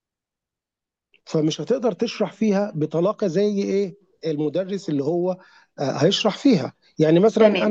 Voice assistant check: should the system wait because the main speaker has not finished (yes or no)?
no